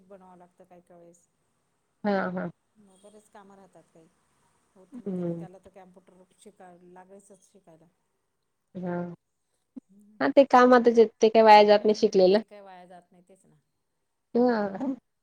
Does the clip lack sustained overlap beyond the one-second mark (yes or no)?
yes